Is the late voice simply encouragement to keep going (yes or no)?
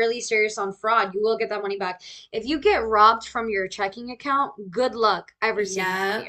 no